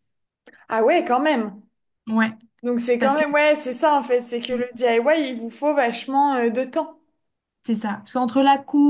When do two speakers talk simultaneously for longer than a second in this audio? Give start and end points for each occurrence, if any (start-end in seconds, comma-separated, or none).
none